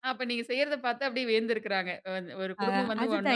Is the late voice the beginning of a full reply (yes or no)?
yes